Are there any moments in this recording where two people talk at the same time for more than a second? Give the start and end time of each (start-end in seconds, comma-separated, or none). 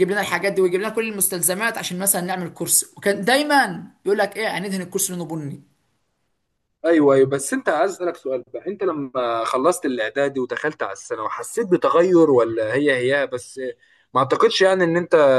none